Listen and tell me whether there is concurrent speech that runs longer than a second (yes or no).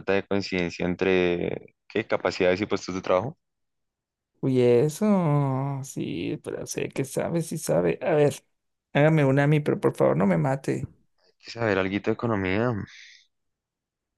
no